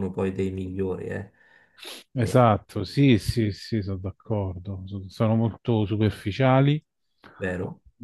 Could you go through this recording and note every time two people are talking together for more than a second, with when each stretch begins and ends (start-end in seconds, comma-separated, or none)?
none